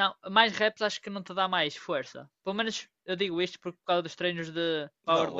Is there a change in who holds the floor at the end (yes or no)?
yes